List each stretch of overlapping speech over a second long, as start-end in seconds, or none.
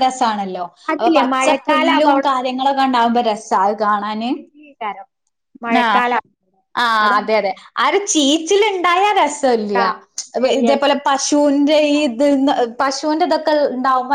0.9-3.3